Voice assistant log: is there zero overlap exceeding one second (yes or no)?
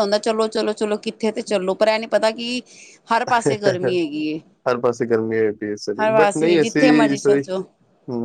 no